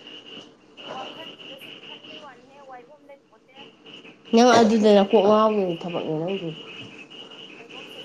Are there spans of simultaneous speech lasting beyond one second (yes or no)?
yes